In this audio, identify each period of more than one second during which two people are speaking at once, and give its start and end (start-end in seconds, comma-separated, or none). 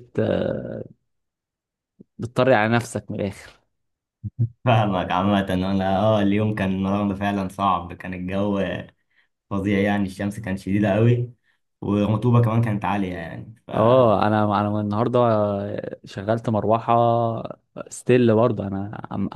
none